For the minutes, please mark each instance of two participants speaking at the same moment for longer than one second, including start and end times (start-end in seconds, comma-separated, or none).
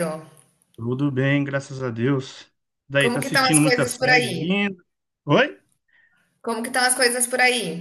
3.0-4.6